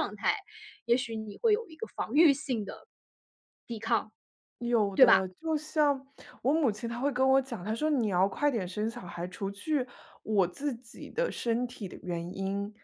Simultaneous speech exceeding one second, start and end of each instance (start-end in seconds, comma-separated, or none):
none